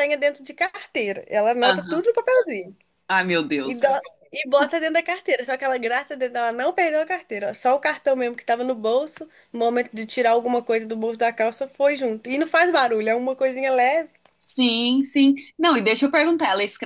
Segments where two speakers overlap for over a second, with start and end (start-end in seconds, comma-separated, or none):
none